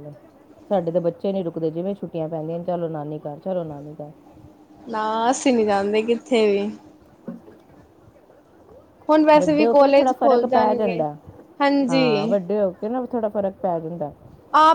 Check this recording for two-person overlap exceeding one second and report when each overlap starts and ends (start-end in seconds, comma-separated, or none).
9.4-11.0